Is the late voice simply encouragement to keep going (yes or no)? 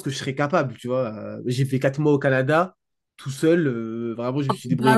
yes